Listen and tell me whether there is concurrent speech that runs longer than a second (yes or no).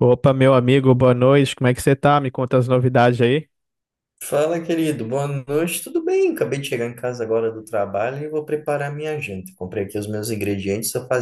no